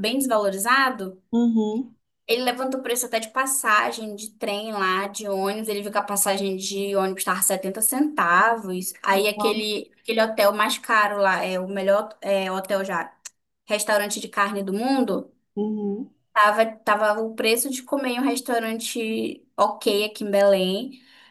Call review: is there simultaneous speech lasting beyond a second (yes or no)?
no